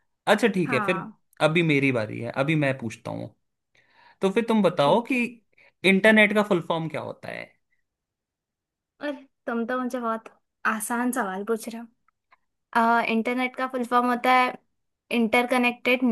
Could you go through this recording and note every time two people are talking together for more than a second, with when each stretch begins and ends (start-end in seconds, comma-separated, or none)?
none